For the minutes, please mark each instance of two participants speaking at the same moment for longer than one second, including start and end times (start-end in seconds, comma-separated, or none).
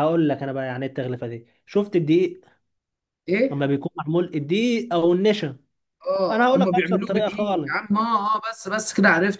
6.3-7.7